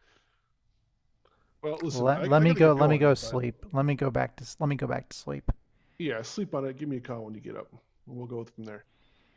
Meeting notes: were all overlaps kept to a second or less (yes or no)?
no